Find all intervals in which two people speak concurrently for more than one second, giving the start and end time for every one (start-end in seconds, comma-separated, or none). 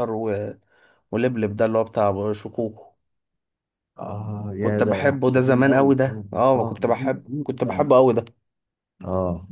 4.6-7.9